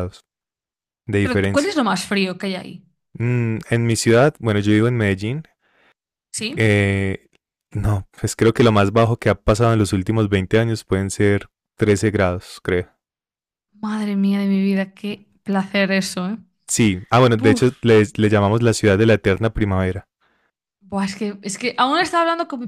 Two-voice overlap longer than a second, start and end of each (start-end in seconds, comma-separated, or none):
none